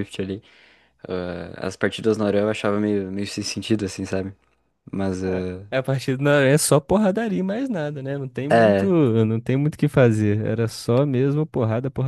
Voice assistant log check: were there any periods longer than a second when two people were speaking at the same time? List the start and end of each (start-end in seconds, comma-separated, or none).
none